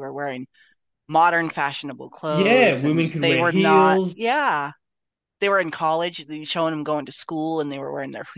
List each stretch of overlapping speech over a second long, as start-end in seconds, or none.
2.3-4.3